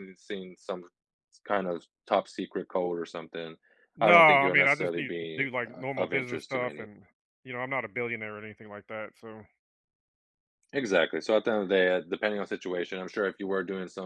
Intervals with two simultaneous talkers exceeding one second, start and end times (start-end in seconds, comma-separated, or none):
4.0-6.9